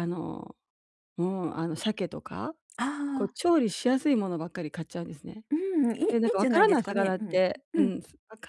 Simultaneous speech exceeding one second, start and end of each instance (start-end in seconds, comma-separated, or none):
6.1-7.9